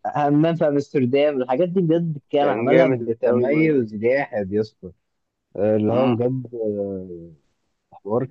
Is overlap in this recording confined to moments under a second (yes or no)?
no